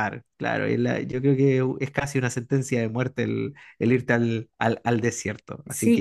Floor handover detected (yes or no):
yes